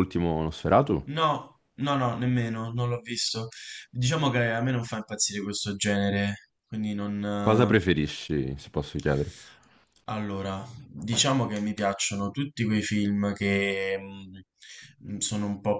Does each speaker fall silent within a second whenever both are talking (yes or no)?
yes